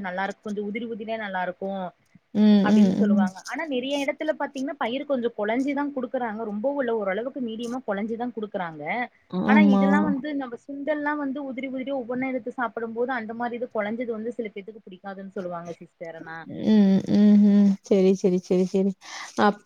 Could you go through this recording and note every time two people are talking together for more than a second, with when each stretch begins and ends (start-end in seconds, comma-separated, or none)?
none